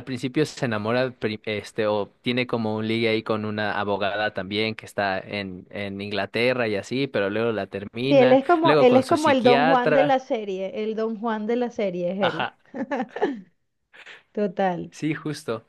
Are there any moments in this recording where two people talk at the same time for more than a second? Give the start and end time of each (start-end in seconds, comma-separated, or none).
8.0-10.2